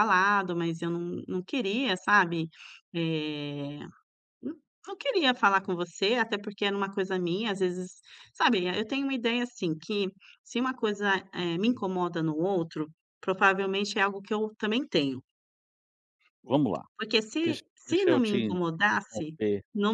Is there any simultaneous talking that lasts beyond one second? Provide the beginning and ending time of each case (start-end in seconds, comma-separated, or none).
17.9-19.3